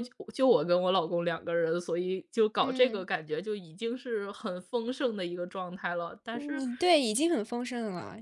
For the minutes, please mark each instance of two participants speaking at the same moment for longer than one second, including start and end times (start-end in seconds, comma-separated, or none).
none